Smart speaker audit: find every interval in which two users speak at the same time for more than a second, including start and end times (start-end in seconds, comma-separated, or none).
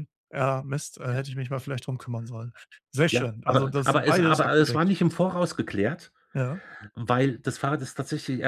3.1-4.9